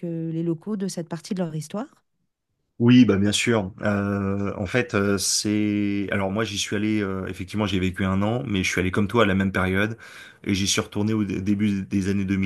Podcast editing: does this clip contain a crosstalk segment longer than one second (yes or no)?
no